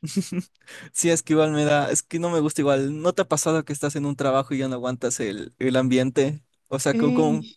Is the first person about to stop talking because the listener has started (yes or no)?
no